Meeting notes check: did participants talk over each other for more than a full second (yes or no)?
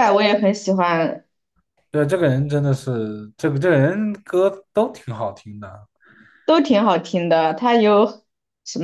no